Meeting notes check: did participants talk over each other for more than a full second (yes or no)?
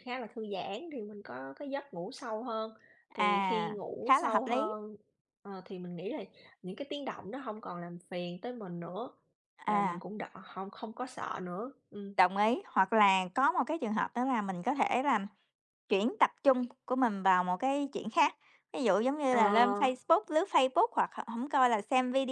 yes